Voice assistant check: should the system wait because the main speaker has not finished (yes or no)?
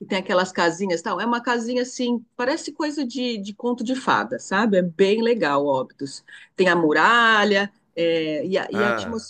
yes